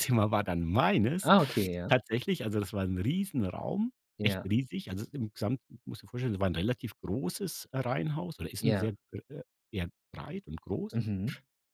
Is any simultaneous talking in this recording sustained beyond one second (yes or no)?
no